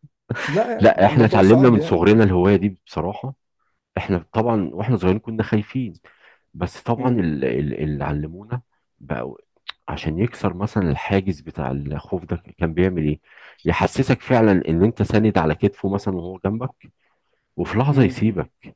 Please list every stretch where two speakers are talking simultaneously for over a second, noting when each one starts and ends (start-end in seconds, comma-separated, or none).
0.8-2.0